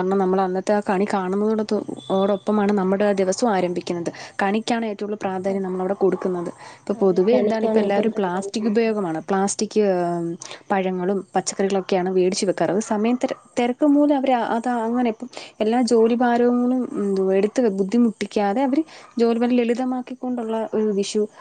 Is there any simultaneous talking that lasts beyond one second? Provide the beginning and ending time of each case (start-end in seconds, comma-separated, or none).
7.0-8.9